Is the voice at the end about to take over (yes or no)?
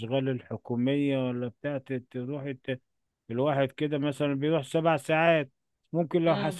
no